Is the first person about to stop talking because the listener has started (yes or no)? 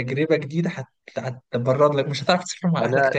yes